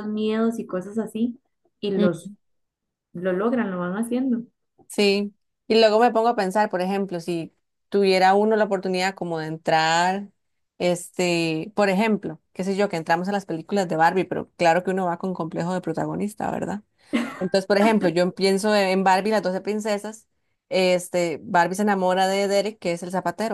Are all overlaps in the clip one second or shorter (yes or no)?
yes